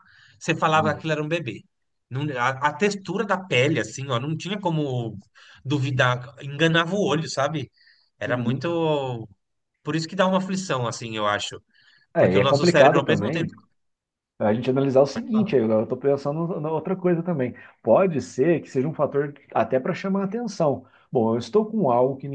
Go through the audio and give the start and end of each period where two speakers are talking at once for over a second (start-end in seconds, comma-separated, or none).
12.2-13.5